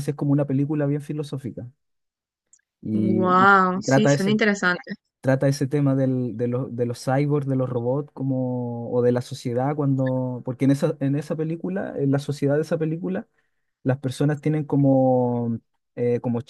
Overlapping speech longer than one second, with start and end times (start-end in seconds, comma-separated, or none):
2.9-4.4